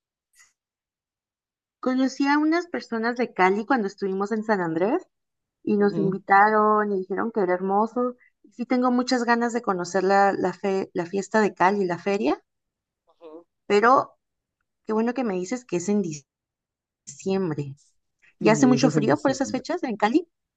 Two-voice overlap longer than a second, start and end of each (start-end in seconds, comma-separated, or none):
18.4-19.6